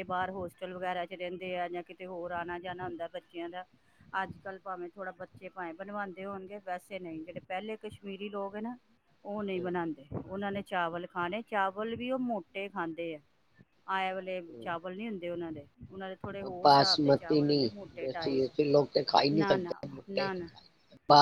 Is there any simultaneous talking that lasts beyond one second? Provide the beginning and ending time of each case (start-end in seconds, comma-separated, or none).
18.2-20.3